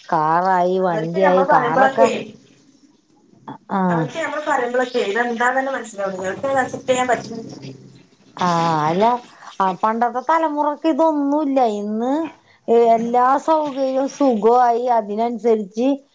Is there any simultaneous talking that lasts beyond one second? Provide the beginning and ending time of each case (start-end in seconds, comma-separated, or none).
0.9-2.1